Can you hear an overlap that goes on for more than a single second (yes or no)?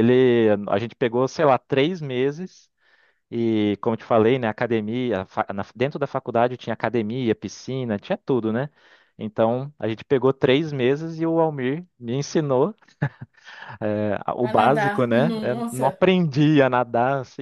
yes